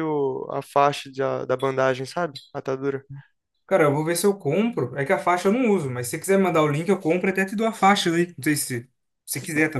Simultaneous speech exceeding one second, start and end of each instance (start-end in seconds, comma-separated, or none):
none